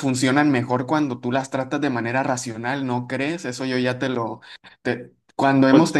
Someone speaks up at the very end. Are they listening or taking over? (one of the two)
listening